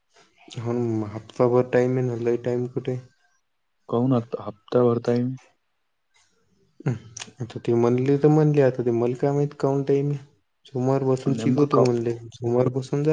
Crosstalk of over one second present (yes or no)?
no